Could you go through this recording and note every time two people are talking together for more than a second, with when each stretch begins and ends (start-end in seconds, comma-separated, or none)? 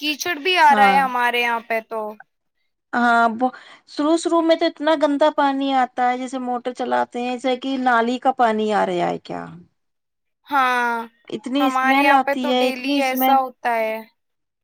11.6-13.4